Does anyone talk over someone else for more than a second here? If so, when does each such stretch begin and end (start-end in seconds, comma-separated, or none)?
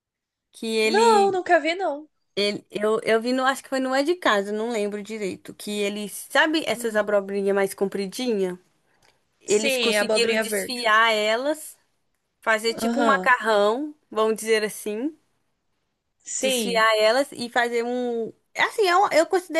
9.5-10.8